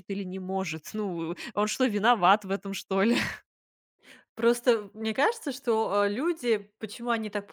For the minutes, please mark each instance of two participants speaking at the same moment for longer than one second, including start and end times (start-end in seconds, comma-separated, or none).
none